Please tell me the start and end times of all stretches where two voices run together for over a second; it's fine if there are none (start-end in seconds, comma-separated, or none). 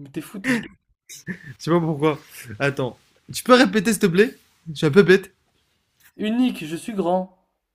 none